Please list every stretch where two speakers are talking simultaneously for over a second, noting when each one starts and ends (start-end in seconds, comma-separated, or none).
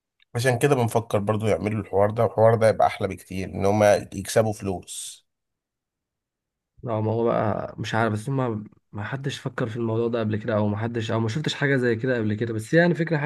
none